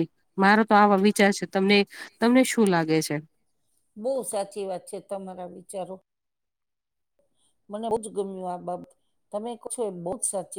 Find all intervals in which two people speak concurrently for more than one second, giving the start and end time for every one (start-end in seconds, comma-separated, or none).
none